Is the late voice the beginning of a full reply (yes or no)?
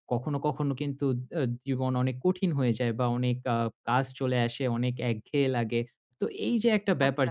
no